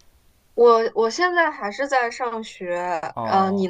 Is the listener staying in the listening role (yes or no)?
no